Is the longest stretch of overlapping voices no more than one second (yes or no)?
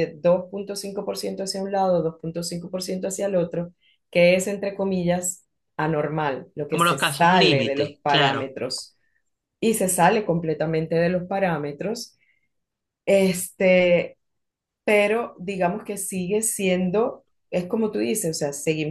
no